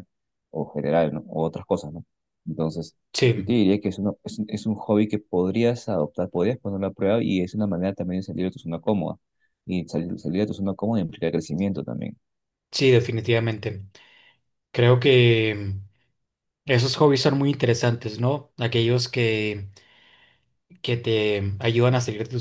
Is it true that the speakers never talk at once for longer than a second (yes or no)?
yes